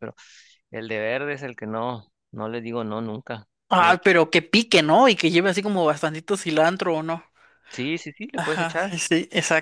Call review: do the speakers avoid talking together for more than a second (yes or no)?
yes